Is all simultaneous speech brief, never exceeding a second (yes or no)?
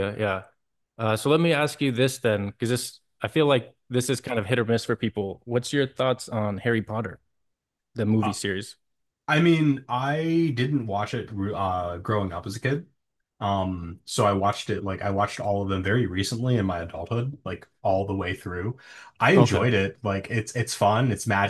yes